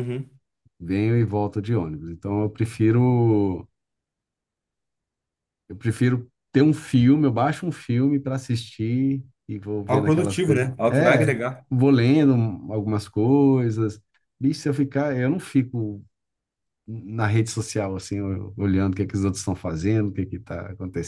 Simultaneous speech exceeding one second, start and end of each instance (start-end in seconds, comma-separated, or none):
9.9-11.7